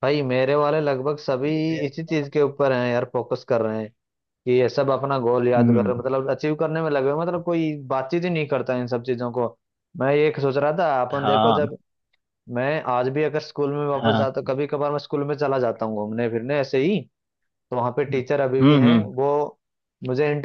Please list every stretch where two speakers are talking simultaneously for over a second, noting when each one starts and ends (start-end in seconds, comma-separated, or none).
none